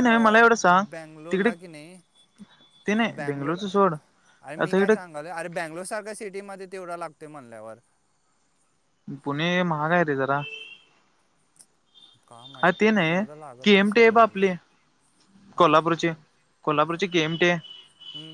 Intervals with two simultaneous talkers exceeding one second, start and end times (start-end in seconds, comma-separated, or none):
12.6-14.5